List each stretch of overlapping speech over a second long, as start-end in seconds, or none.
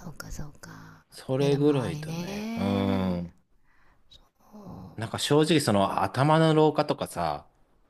1.1-3.2